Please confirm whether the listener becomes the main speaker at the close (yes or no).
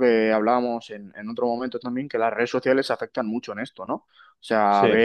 no